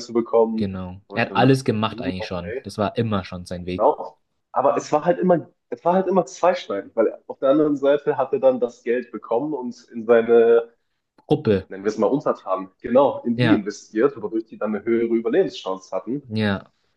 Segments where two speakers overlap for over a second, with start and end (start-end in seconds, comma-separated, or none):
0.6-2.6